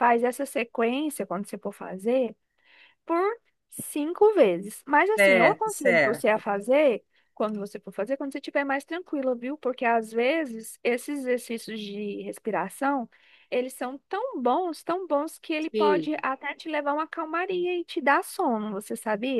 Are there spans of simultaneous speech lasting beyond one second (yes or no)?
yes